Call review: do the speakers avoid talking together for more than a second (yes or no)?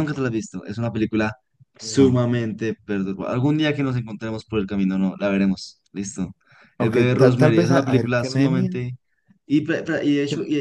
no